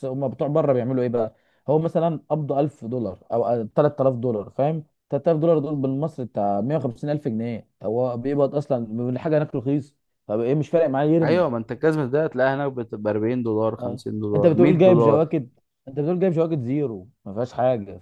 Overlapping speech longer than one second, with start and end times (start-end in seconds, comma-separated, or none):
13.8-15.3